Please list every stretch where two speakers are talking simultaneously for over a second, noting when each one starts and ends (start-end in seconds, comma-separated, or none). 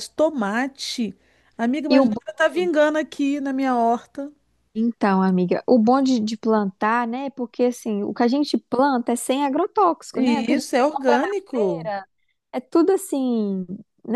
10.1-11.9